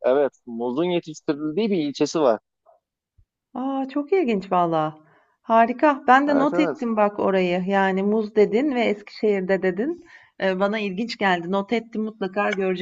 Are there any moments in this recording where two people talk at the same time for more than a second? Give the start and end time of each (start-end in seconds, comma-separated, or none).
none